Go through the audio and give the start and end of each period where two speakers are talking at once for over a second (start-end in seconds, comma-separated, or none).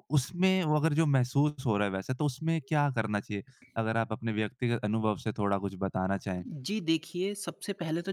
none